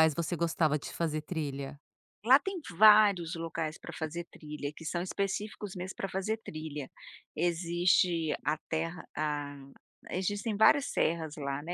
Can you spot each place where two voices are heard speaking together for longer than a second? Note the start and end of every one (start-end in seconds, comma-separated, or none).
none